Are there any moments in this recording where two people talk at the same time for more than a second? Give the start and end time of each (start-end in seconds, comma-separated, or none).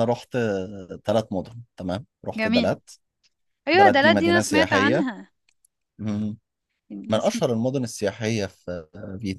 3.7-5.1